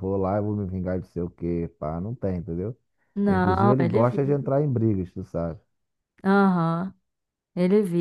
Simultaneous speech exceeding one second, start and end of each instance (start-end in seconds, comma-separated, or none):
3.3-4.5